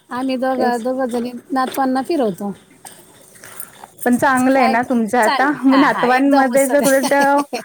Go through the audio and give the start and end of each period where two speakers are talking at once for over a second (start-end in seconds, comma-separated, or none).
4.6-7.1